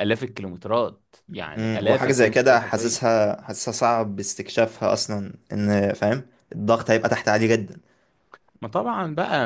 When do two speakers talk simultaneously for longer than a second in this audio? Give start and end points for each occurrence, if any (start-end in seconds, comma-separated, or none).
1.6-3.0